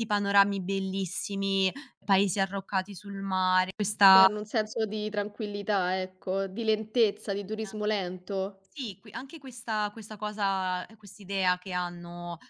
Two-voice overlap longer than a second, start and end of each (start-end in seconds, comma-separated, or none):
none